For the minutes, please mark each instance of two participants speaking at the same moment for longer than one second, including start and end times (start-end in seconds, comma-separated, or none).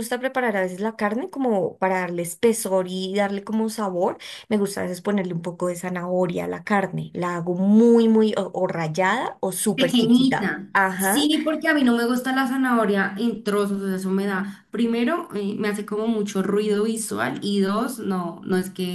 9.7-11.3